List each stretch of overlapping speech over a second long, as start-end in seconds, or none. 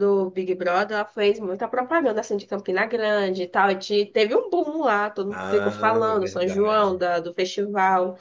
5.3-7.0